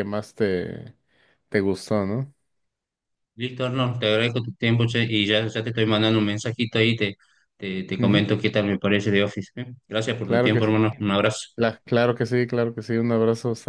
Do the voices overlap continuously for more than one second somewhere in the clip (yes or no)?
no